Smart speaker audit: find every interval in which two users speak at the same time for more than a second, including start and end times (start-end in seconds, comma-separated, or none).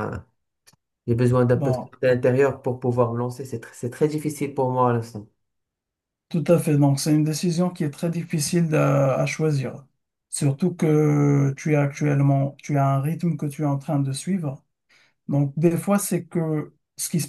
none